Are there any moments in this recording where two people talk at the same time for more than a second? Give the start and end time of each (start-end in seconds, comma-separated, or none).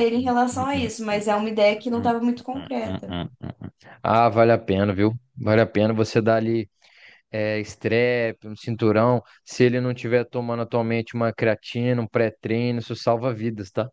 none